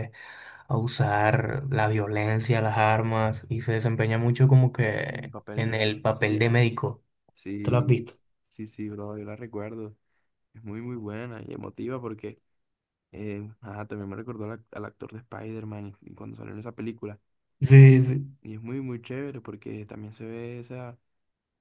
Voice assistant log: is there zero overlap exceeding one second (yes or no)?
no